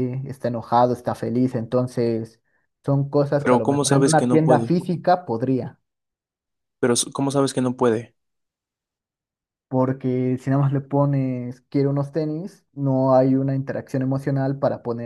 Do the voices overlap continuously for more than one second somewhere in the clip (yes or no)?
yes